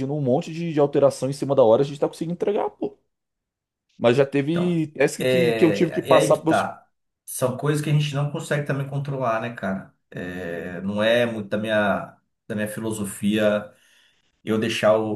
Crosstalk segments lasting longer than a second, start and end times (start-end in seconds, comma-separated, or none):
4.5-6.7